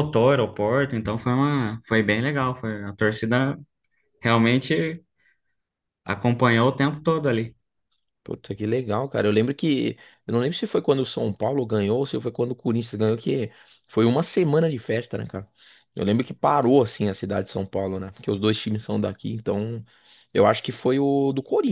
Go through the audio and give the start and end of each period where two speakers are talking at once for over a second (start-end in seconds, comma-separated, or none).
none